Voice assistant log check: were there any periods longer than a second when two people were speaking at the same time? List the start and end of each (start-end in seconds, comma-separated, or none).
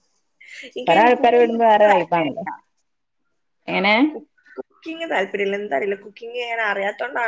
0.9-2.4